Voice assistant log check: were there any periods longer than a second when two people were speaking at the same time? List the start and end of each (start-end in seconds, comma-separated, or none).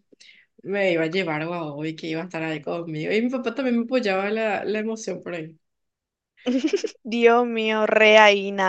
none